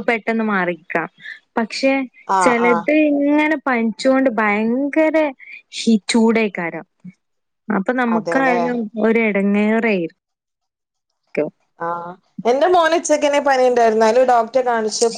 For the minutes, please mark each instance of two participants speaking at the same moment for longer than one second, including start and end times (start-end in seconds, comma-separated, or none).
none